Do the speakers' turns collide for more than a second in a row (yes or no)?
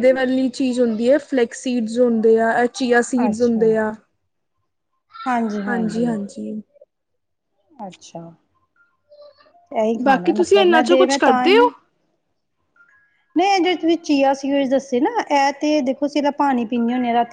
yes